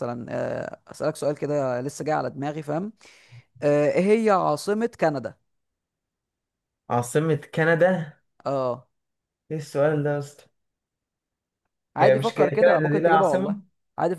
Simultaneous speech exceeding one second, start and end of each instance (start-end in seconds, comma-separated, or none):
12.0-13.6